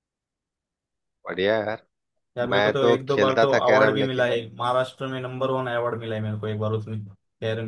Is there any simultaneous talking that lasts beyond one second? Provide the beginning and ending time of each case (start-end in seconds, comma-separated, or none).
2.5-4.3